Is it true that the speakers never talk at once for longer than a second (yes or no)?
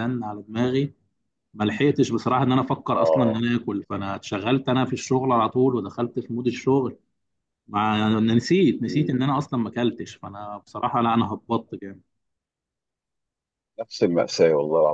yes